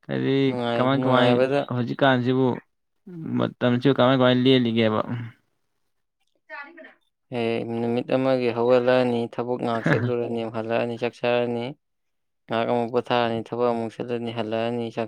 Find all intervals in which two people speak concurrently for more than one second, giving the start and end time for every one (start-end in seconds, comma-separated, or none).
none